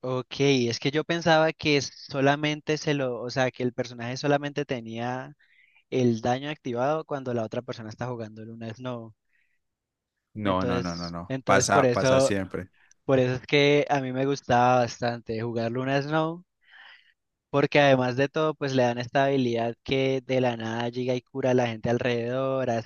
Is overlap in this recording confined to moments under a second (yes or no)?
no